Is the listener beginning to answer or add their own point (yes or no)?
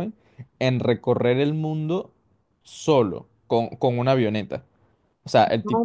no